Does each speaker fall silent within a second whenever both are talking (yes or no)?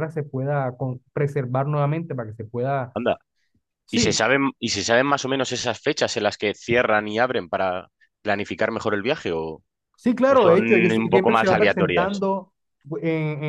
no